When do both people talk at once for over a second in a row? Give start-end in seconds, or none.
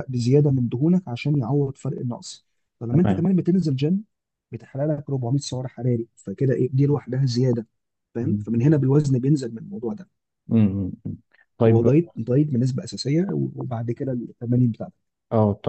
none